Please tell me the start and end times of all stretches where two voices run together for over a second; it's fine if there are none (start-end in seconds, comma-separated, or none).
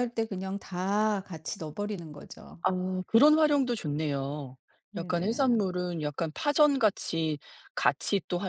none